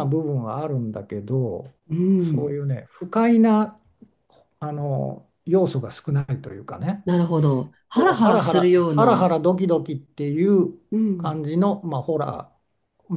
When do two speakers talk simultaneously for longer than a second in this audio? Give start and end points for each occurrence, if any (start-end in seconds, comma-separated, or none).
7.9-9.3